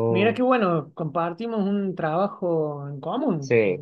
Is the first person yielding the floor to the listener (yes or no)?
yes